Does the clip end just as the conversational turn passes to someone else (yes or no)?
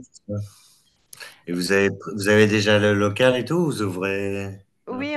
yes